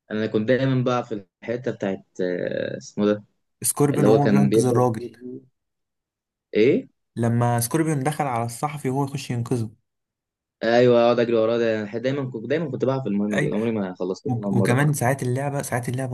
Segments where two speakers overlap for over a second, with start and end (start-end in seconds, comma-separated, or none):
3.9-5.2